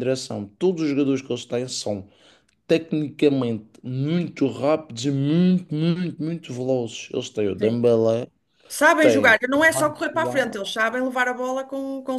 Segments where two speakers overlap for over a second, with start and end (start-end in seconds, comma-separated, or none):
9.0-10.6